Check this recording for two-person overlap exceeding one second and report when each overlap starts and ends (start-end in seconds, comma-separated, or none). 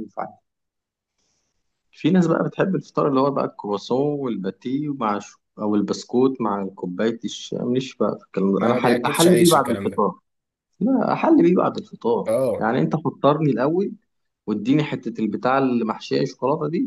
8.6-10.0